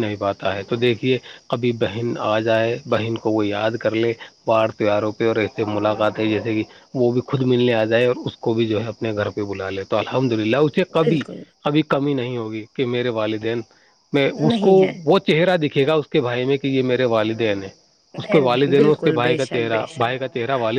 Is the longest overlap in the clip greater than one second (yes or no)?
yes